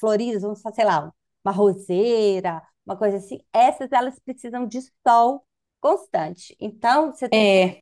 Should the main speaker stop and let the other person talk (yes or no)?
no